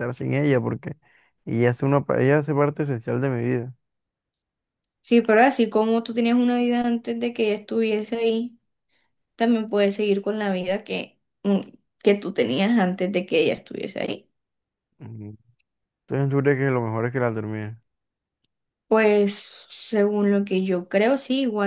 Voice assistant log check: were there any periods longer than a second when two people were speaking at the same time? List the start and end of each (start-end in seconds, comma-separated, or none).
none